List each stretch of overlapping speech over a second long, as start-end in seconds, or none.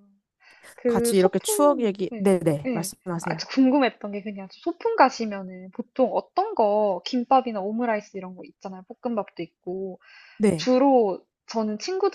0.9-3.4